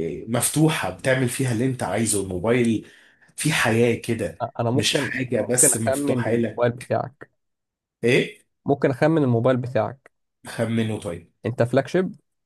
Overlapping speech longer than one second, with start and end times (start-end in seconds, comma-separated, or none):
4.7-6.7